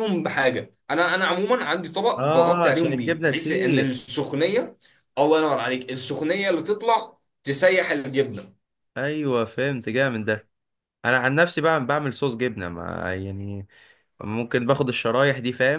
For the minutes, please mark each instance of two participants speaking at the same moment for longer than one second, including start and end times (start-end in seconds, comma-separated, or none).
2.2-3.9